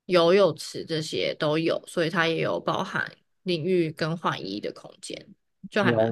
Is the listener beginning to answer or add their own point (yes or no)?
yes